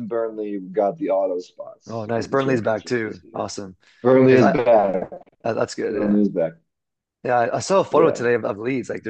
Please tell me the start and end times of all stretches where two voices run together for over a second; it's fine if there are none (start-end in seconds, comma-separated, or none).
1.9-3.5